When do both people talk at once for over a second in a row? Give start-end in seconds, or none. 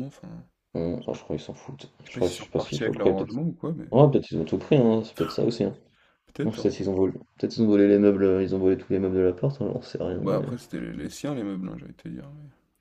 2.0-3.4